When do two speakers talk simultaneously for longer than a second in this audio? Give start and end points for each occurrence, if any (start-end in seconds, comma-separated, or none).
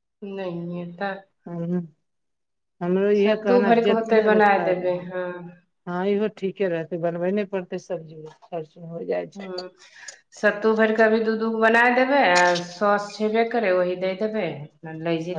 3.2-5.0